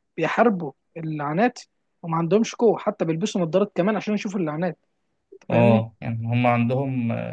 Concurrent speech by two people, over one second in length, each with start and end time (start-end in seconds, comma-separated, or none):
none